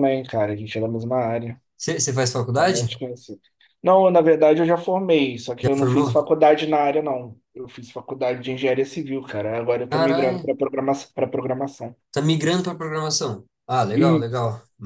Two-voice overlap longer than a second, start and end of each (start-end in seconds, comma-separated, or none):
none